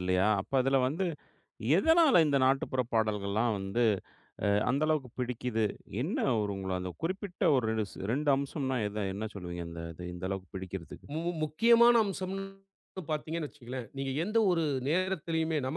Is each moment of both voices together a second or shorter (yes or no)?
yes